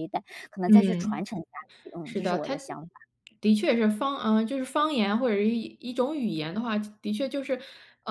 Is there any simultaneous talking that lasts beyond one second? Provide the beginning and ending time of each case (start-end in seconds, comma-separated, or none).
none